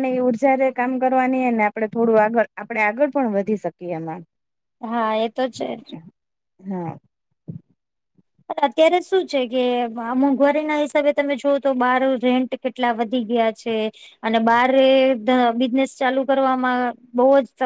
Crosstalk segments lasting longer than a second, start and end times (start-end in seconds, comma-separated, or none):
none